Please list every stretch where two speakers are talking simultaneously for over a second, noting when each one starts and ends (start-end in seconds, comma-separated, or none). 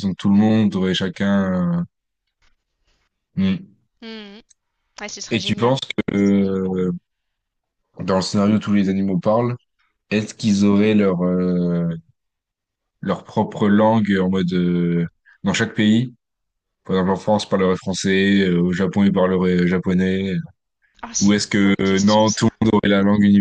21.2-22.5